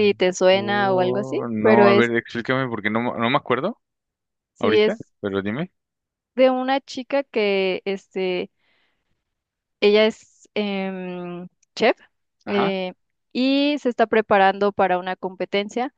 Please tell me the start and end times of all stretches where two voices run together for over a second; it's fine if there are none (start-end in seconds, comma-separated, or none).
0.5-2.1